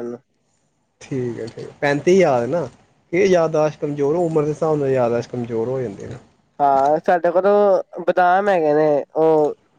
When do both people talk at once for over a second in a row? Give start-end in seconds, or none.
none